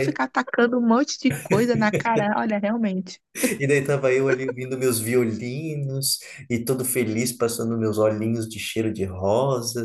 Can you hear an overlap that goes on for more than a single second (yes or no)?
no